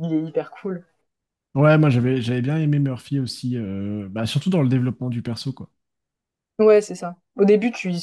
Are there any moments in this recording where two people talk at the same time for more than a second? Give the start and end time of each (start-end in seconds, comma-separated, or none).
none